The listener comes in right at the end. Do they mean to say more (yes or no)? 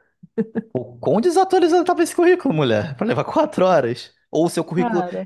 no